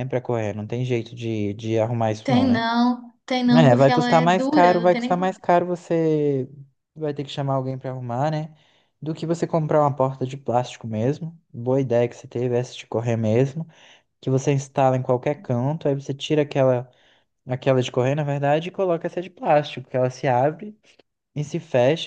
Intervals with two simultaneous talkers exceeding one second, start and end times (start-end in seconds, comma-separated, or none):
3.5-5.3